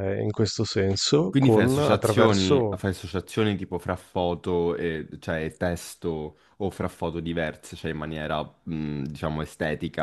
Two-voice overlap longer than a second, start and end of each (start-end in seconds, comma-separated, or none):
1.3-2.8